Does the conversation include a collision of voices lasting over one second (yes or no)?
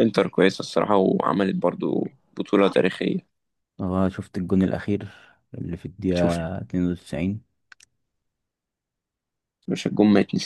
no